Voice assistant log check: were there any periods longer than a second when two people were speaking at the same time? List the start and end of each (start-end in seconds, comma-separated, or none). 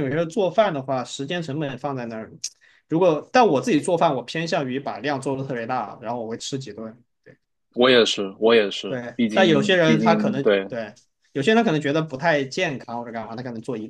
8.9-10.7